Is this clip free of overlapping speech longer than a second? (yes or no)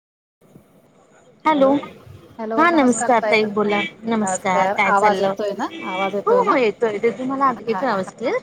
yes